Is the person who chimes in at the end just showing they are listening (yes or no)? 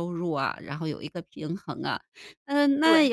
yes